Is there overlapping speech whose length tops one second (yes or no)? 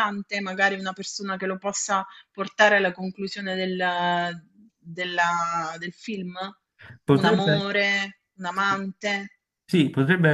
no